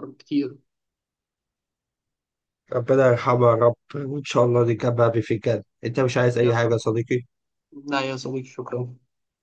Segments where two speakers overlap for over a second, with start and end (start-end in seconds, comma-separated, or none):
none